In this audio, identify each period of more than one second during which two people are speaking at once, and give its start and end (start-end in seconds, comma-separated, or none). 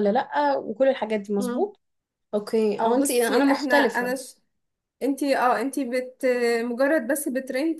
2.8-4.2